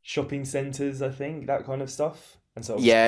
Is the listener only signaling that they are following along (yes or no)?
no